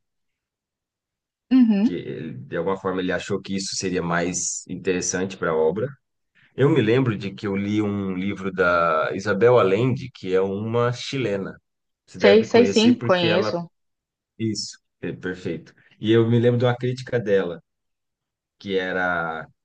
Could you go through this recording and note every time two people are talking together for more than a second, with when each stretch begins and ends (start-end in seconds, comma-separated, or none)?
12.2-13.6